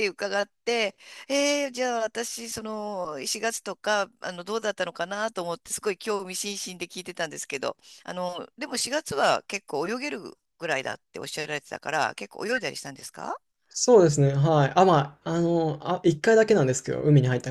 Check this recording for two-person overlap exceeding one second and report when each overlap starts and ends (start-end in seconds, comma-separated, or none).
none